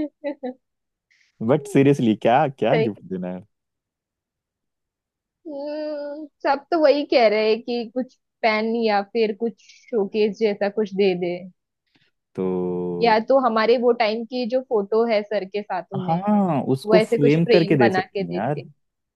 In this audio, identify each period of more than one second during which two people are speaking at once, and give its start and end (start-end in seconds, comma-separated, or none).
16.9-18.6